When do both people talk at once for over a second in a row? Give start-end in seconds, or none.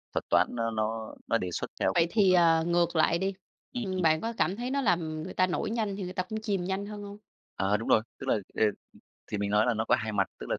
none